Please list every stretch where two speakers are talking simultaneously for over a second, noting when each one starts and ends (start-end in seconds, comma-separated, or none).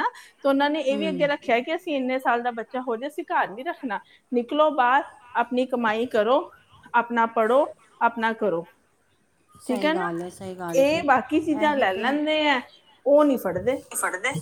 none